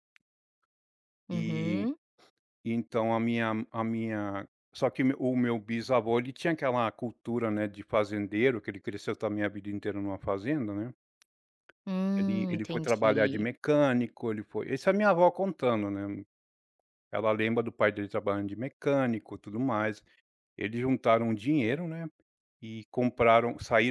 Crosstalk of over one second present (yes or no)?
yes